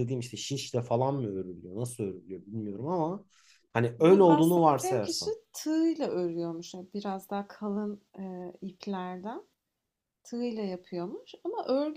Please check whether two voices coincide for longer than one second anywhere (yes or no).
yes